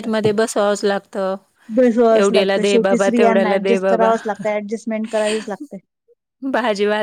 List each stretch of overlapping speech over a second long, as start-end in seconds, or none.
none